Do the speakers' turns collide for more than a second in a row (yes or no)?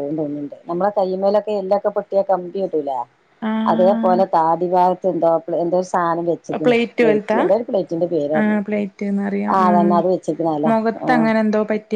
no